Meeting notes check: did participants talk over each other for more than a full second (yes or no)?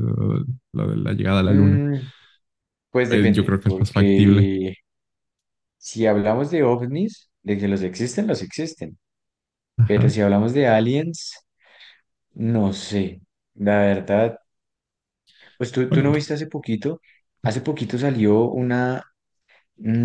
yes